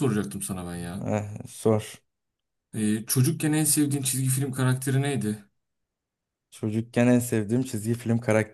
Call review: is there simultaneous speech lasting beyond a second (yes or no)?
no